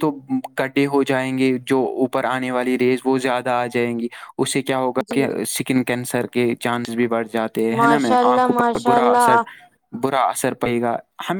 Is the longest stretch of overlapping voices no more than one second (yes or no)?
no